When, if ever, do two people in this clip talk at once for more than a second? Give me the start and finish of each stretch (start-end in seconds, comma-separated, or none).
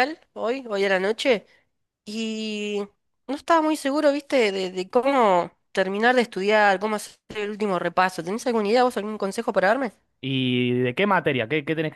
none